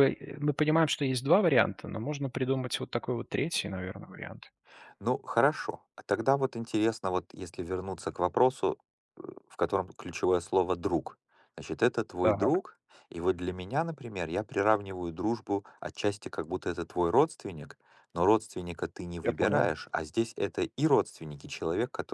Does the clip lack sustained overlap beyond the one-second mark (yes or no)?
yes